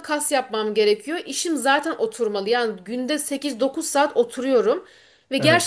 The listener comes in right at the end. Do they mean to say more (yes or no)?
no